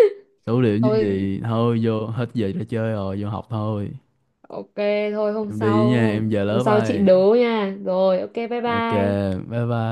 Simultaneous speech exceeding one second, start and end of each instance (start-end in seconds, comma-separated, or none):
5.5-7.0